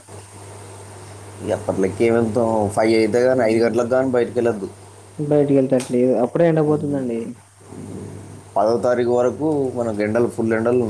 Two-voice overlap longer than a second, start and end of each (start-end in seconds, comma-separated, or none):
none